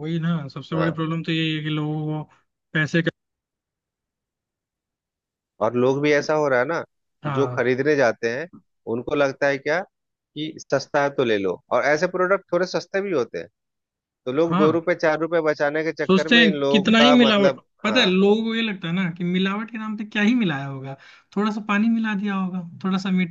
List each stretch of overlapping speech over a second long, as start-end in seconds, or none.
16.1-18.1